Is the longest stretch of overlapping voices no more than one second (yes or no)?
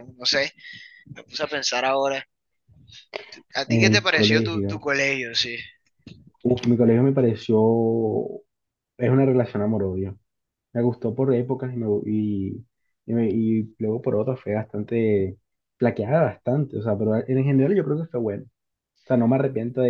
no